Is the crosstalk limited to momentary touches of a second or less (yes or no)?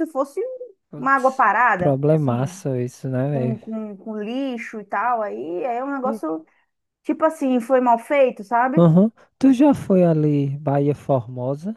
no